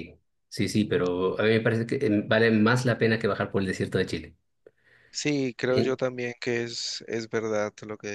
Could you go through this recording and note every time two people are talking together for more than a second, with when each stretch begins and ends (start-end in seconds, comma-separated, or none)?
none